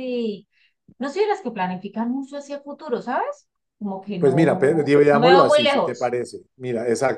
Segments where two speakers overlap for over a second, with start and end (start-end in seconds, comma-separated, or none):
4.2-6.1